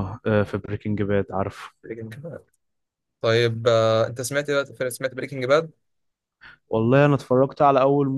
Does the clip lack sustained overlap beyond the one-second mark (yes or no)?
yes